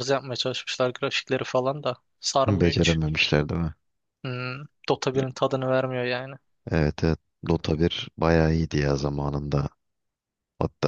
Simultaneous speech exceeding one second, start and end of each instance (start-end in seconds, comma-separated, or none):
none